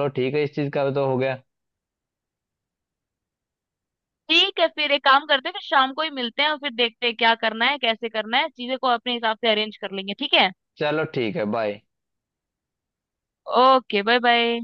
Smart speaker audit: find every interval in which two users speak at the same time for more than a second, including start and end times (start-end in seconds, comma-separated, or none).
none